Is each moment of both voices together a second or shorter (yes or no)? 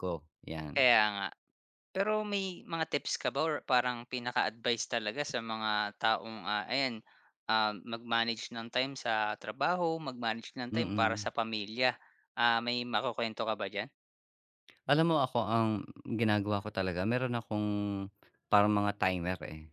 yes